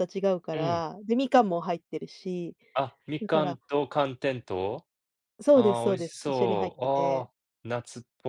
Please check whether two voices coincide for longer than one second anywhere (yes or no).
yes